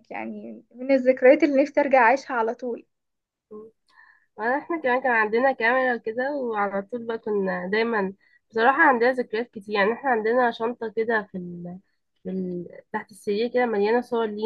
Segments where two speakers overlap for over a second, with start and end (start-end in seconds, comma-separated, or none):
none